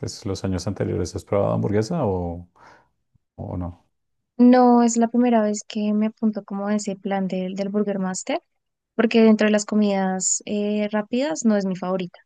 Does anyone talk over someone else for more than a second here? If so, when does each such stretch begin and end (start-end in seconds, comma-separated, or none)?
none